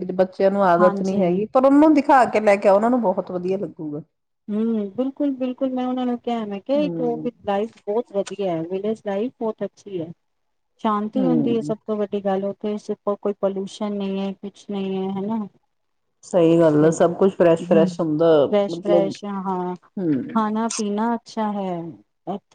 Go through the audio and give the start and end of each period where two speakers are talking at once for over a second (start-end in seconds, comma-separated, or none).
none